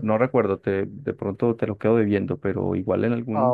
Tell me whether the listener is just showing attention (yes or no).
yes